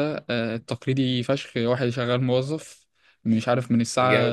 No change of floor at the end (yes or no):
yes